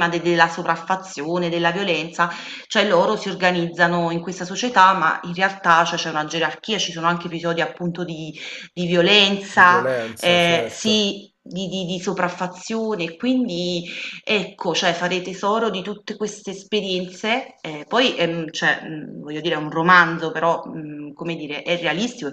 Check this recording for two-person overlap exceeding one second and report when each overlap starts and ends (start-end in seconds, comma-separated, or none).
9.5-11.1